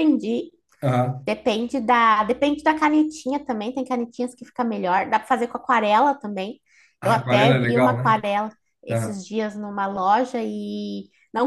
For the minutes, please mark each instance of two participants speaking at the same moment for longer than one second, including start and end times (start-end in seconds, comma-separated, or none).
7.0-8.2